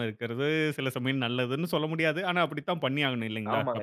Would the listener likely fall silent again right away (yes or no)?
no